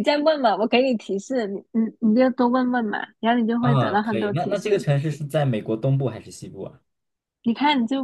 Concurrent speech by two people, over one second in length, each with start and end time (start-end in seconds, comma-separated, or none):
3.6-4.8